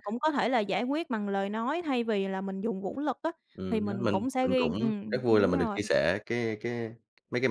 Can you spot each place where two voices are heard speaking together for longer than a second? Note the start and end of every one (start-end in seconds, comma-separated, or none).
3.7-5.8